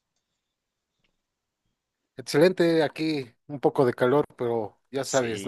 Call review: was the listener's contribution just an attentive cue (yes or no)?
no